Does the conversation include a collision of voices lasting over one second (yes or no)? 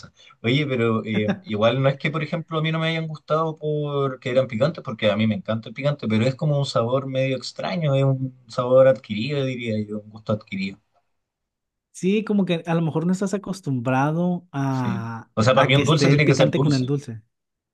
yes